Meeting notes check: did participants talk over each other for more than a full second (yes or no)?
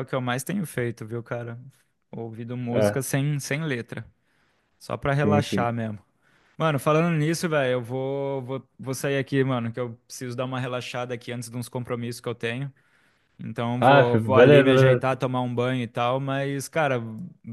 yes